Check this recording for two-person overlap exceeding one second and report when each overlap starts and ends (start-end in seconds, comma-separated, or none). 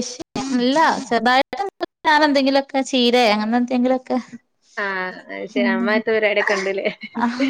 none